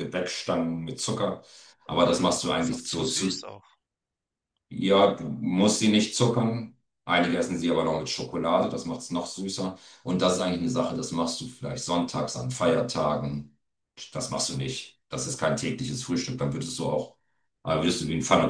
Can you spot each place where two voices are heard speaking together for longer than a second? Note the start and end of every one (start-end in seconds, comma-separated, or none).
2.1-3.5